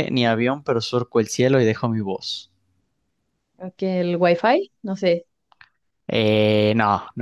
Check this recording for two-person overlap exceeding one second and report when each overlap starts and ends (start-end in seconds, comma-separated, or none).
none